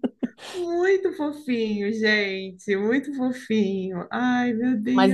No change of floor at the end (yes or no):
no